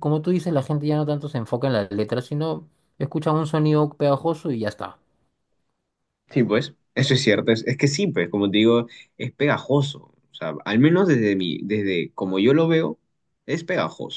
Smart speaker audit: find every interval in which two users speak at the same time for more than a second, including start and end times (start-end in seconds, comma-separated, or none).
none